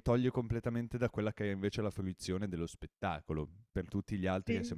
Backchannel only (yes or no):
yes